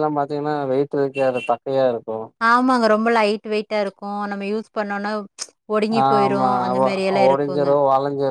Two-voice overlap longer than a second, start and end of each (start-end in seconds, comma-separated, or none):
none